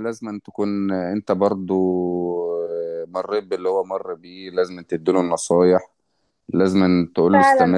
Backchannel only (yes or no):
yes